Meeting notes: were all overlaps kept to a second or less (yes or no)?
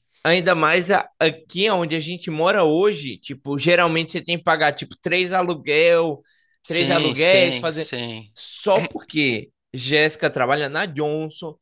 no